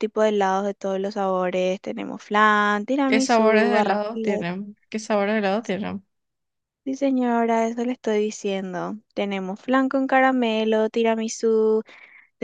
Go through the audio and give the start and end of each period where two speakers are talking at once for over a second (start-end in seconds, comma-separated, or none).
3.1-4.5